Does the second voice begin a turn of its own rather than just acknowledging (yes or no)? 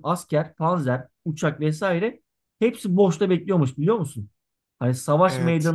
no